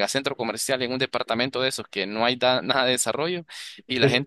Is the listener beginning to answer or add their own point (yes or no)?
no